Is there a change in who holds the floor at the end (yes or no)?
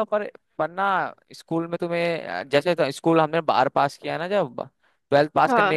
no